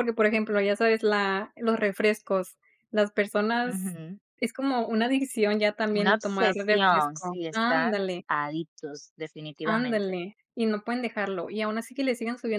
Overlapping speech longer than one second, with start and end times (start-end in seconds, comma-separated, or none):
5.9-8.2